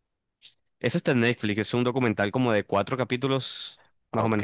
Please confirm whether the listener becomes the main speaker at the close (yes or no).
yes